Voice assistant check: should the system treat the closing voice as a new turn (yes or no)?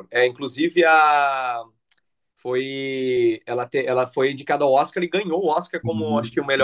no